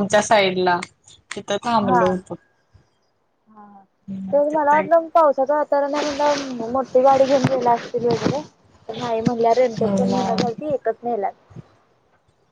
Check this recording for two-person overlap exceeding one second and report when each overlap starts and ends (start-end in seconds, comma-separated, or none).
none